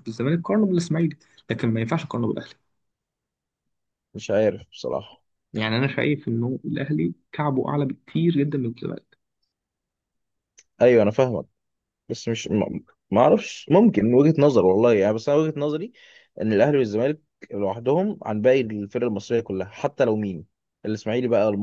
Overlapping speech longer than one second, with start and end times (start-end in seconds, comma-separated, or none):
none